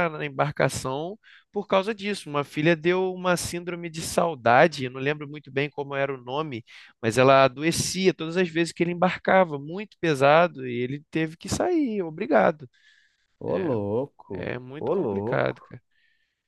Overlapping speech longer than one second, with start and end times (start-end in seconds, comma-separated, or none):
13.4-15.8